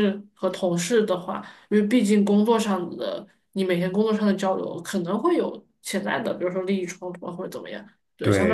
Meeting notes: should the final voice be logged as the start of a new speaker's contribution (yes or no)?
yes